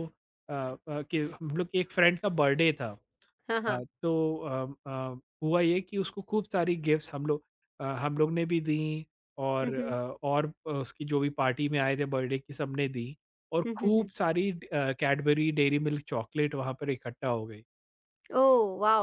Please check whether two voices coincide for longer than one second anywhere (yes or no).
no